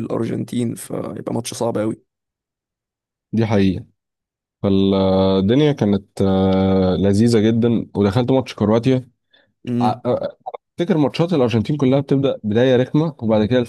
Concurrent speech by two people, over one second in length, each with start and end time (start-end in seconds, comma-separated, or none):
none